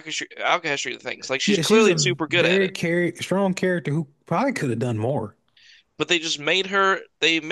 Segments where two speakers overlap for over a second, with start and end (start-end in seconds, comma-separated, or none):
1.4-2.7